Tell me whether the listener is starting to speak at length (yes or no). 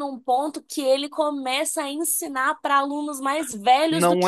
yes